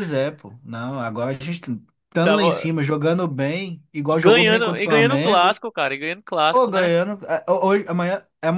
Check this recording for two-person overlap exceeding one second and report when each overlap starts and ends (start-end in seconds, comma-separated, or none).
4.1-5.6